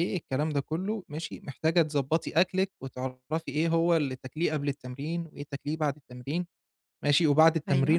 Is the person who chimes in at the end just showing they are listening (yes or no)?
yes